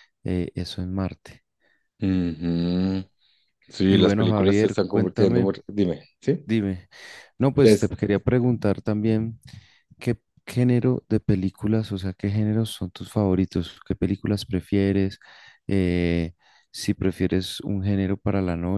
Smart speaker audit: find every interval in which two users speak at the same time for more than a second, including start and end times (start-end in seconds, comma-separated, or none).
3.9-5.5